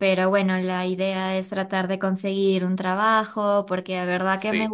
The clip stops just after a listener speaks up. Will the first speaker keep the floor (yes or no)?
yes